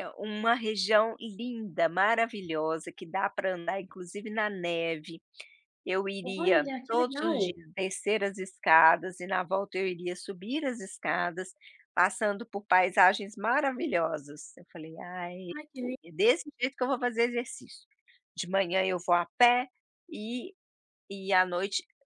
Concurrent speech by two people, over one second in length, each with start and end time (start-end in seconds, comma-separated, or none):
6.2-7.5